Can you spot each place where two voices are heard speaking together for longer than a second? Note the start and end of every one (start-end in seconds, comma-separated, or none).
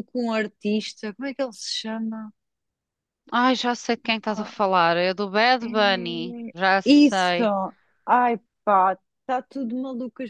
5.6-7.4